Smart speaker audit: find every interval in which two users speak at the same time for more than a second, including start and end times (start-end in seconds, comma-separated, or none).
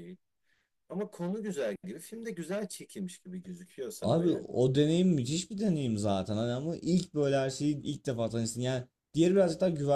none